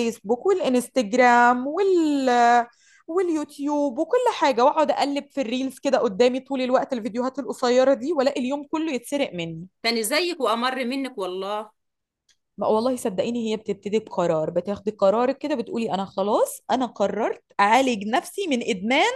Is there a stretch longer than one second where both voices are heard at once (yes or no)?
no